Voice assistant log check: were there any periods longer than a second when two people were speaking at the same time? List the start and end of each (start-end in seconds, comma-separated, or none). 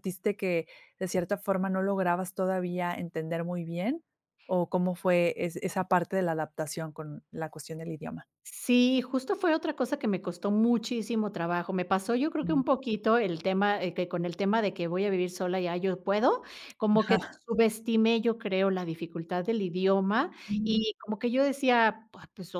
none